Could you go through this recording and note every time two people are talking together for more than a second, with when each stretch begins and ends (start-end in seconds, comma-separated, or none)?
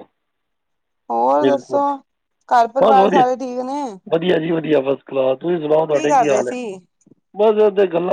none